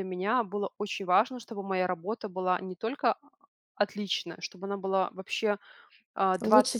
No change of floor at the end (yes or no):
yes